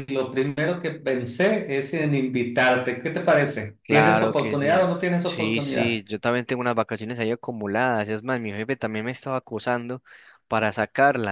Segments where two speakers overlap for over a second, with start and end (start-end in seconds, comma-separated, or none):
3.8-6.0